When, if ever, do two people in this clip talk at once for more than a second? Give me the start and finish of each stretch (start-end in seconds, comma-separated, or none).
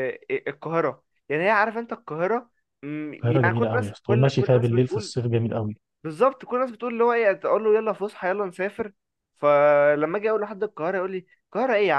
3.1-5.1